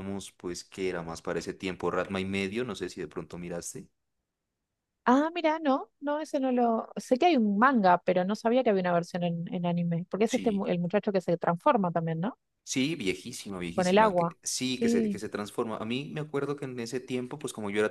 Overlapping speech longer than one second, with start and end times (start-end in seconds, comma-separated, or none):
13.7-15.2